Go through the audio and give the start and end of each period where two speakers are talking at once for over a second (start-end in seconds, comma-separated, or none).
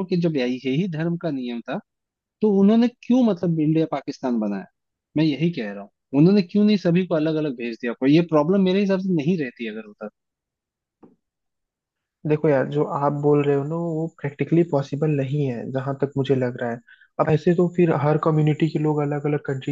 none